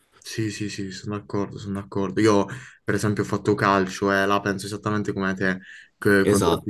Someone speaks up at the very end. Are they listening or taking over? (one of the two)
listening